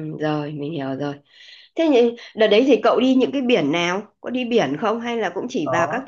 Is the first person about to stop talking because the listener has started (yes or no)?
yes